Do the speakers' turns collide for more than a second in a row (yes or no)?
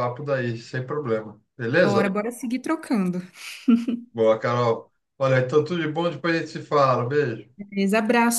no